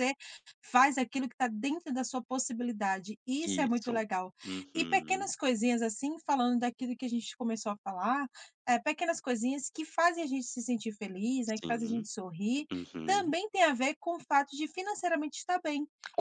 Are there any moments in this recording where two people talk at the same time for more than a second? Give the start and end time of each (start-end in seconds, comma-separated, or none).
none